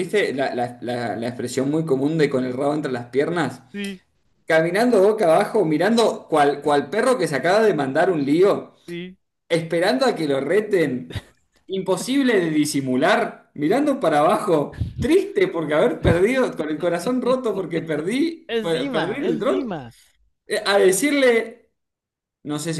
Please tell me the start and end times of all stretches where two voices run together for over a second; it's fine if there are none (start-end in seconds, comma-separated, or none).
18.5-19.7